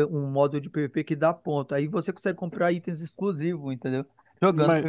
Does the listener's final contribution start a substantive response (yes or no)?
yes